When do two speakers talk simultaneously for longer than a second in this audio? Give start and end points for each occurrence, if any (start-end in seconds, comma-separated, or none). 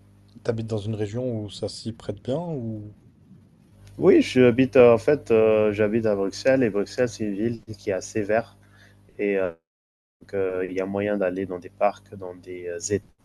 none